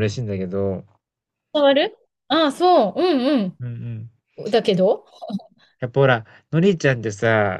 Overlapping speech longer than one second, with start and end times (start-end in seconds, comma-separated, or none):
none